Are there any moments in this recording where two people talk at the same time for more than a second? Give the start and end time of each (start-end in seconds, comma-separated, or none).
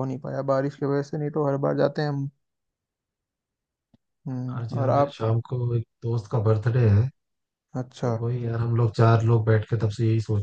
none